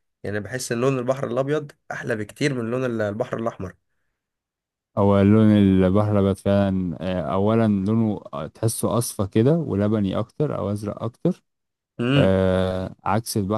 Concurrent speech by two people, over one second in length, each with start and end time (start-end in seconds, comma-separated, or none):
none